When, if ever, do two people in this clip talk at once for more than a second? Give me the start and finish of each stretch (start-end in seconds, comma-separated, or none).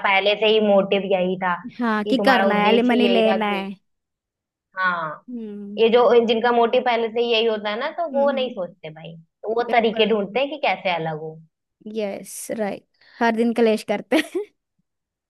2.0-3.7